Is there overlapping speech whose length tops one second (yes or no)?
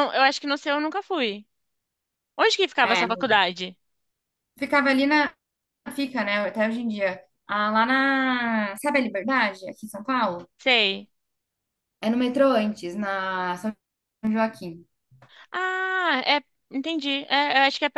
no